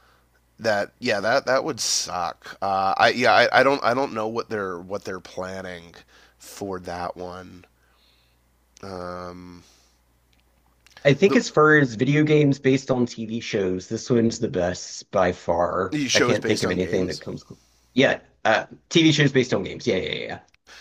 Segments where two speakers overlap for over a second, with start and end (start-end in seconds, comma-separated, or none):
15.9-17.2